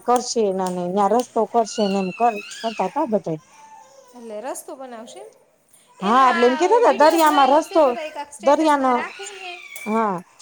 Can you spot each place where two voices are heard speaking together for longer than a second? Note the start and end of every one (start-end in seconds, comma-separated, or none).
6.1-7.8